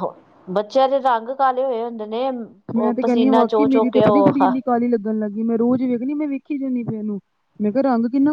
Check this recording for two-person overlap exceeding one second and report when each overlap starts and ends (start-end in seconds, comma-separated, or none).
2.8-4.4